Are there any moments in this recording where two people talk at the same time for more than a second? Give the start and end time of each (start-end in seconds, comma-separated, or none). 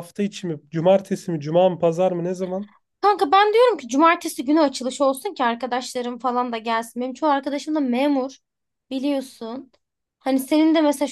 none